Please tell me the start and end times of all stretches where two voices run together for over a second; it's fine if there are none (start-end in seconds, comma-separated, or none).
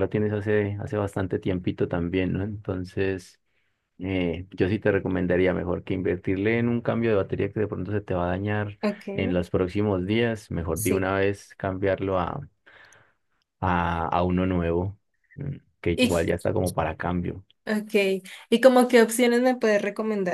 none